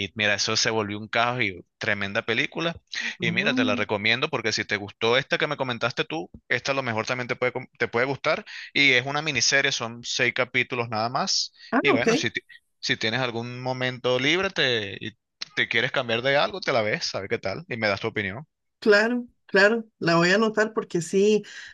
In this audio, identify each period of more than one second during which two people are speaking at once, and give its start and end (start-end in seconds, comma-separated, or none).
none